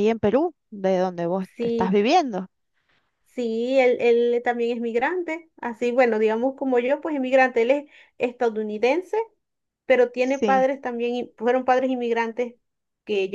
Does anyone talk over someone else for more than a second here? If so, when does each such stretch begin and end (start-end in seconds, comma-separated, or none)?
none